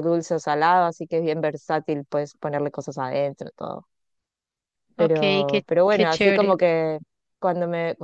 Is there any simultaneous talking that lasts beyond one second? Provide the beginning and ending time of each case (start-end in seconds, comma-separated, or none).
5.0-6.6